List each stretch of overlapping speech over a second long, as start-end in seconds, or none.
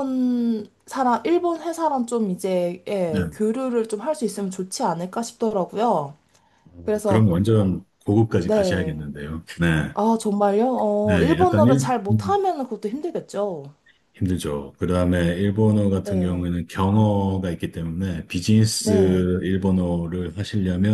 11.0-12.4